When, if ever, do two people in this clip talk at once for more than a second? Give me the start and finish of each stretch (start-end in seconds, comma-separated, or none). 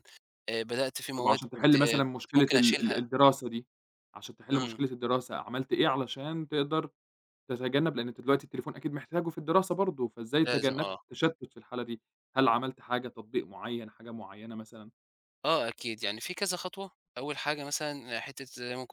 1.2-3.1